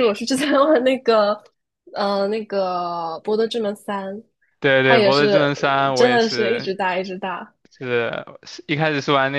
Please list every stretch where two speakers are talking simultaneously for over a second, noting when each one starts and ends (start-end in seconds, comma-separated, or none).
4.8-6.7